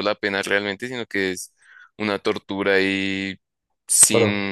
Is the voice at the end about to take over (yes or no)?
no